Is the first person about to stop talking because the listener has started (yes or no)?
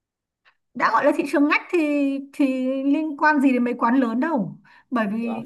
no